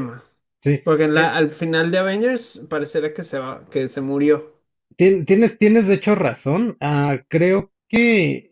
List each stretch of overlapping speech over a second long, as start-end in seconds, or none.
none